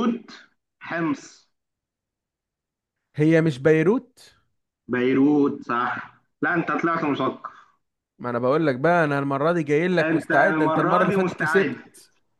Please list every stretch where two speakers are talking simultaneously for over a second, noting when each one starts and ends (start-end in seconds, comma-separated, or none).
10.0-11.8